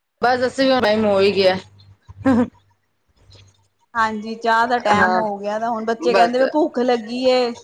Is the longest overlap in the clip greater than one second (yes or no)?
no